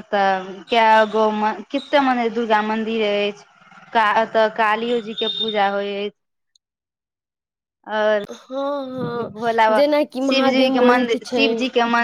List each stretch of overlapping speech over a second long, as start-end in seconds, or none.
9.3-11.4